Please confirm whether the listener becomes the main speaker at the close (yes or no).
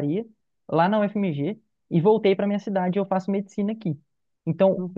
no